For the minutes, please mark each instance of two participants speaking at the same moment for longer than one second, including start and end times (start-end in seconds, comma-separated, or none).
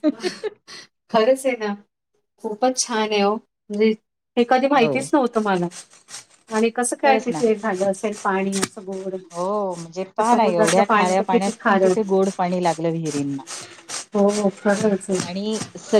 10.2-12.1